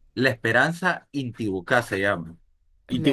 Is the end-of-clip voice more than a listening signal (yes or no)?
no